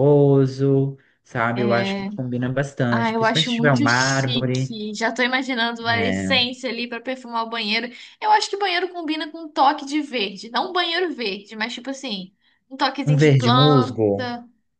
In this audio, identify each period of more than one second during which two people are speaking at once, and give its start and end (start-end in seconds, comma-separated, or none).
2.9-4.8, 13.0-14.3